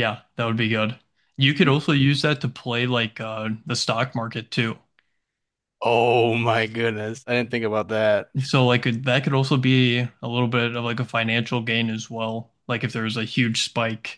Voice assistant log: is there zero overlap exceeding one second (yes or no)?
yes